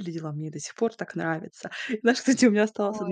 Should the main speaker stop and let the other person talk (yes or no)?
no